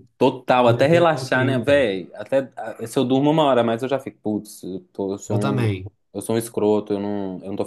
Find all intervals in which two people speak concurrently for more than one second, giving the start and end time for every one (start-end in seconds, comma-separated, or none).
0.6-1.8